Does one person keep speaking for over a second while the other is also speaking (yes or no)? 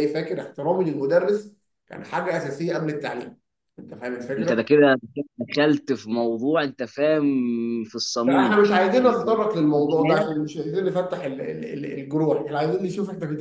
yes